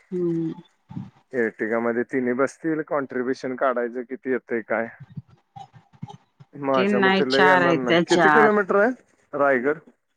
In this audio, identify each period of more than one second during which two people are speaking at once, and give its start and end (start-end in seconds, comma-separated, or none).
6.8-8.6